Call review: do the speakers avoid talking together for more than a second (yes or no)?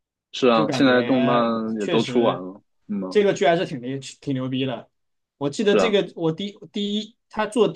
no